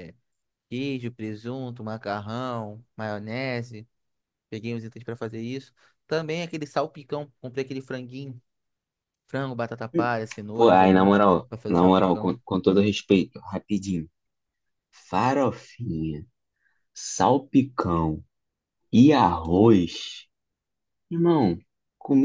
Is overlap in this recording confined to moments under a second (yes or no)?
no